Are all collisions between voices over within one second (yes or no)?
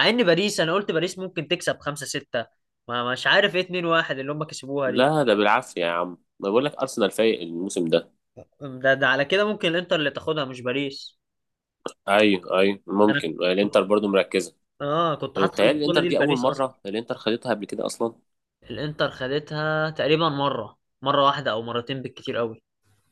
no